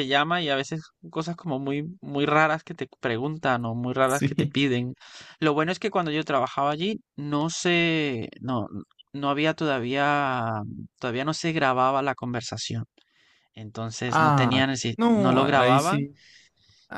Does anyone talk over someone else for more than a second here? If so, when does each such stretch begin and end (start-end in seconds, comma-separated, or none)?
14.1-16.1